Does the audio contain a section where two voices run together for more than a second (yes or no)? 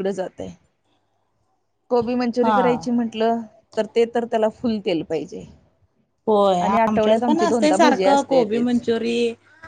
yes